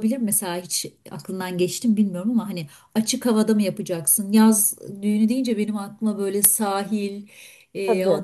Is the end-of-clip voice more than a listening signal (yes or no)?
no